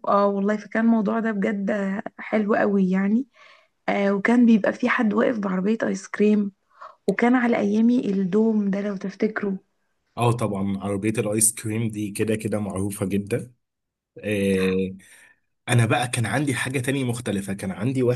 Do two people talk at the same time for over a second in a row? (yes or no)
no